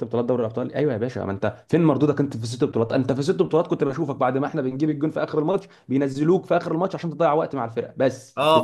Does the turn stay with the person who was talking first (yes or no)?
no